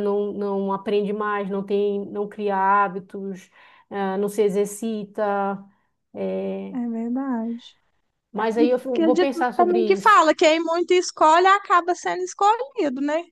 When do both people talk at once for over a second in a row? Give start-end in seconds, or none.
8.6-10.2